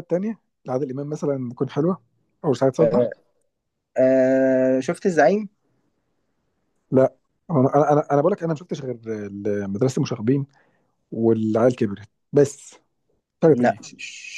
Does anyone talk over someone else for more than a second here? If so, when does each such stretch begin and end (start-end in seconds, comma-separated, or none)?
none